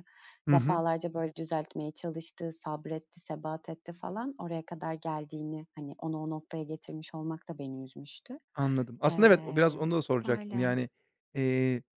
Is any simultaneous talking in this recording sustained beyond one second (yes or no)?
yes